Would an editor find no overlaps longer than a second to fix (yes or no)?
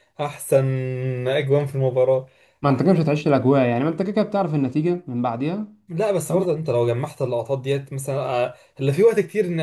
yes